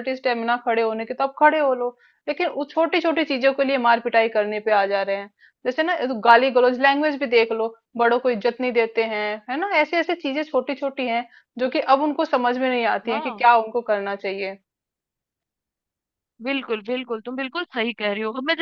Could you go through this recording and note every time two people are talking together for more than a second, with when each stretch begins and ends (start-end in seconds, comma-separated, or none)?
none